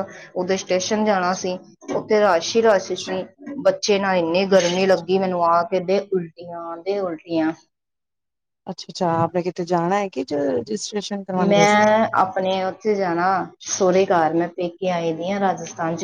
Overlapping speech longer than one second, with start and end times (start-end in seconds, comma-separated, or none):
none